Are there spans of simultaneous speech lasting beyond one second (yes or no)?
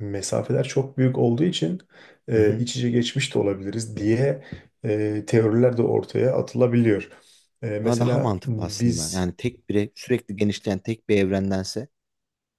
yes